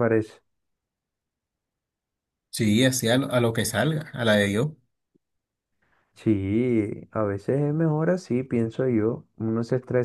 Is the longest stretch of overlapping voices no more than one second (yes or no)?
yes